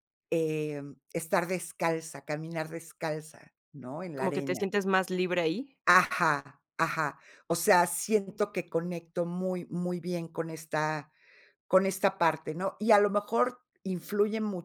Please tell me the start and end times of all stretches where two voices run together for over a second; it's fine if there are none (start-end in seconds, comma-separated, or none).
none